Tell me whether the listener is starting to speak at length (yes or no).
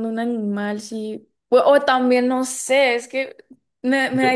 no